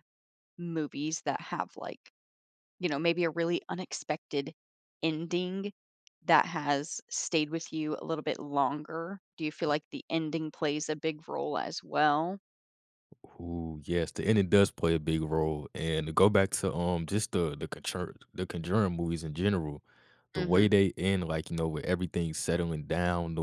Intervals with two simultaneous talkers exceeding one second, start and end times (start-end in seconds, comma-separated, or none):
none